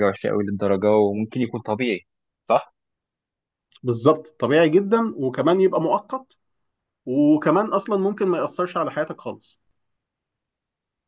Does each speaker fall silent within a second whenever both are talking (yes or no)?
yes